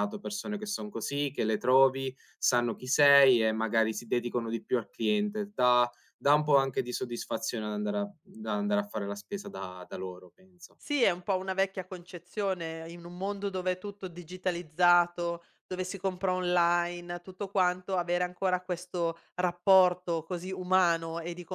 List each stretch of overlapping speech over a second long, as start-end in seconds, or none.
none